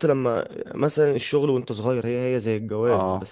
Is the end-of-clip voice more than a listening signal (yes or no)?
no